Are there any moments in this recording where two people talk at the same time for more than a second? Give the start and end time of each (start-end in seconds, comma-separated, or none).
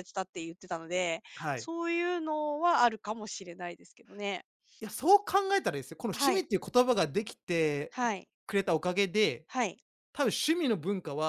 none